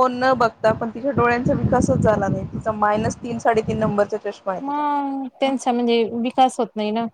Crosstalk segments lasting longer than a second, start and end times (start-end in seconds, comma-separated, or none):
none